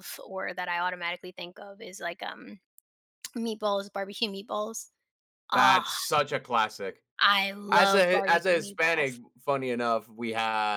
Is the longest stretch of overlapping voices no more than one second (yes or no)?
no